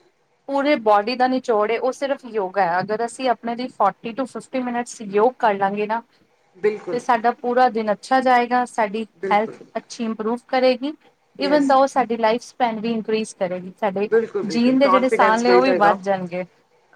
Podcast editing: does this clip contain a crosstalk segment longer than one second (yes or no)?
yes